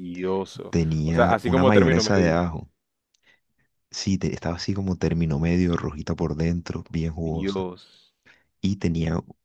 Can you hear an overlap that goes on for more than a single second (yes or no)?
yes